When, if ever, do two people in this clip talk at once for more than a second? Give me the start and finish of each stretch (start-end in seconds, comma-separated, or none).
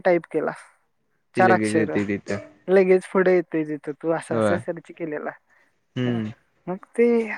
none